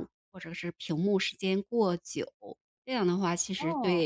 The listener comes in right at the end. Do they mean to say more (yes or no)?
no